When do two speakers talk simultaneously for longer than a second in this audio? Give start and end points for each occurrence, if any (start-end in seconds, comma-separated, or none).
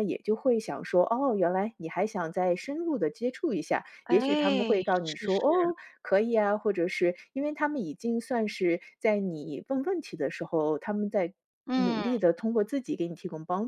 4.0-5.4